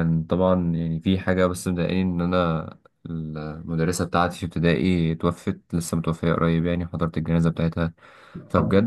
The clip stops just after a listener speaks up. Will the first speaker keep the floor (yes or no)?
yes